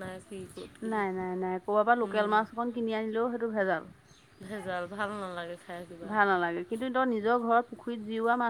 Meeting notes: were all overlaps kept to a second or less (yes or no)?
yes